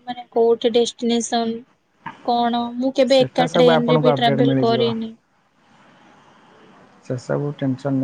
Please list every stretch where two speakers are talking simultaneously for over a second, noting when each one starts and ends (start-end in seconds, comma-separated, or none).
3.1-4.8